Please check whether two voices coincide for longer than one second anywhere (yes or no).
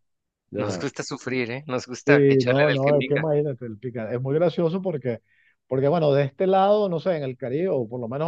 yes